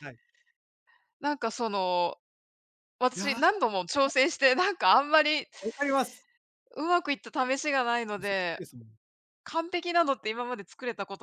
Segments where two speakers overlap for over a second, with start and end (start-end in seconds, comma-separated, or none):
none